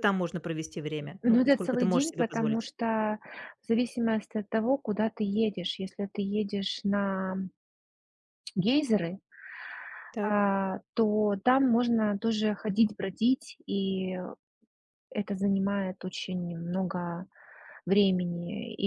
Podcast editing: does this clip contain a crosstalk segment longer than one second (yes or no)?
yes